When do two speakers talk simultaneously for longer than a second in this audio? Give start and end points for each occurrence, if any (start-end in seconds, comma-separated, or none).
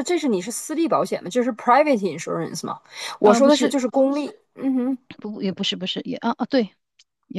none